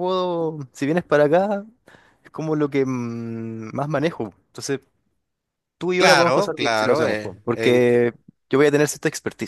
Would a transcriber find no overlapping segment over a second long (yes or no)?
no